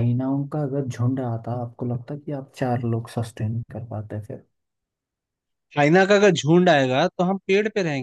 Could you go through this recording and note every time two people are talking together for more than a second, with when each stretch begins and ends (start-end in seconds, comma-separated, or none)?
none